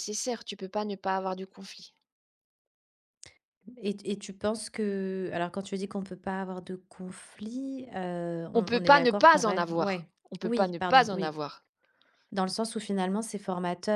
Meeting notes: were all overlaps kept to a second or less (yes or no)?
no